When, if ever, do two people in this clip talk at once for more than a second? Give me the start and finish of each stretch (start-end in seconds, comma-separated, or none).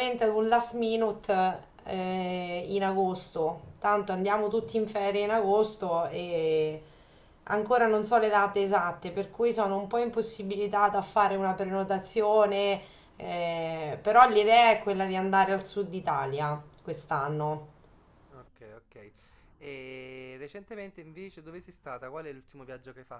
none